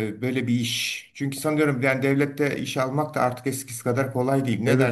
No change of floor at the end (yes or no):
no